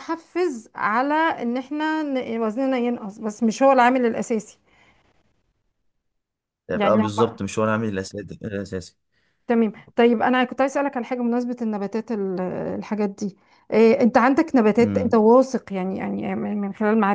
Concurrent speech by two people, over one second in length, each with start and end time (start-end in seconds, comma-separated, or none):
none